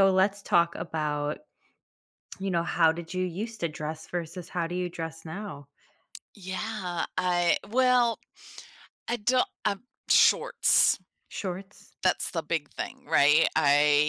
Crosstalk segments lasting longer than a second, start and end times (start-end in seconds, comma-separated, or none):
none